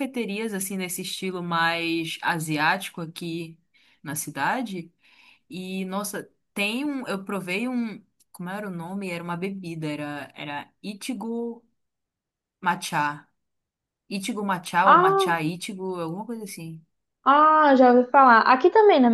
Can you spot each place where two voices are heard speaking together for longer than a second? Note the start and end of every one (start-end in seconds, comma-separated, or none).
none